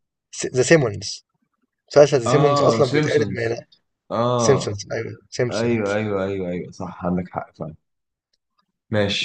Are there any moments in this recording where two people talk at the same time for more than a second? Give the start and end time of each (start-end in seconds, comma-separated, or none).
2.2-3.6